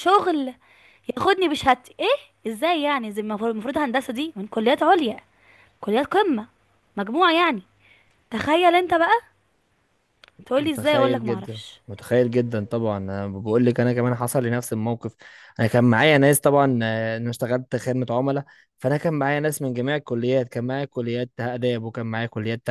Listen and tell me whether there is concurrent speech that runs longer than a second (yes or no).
yes